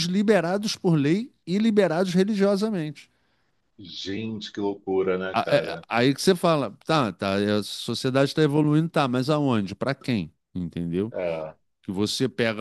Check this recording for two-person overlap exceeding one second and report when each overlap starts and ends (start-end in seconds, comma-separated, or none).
none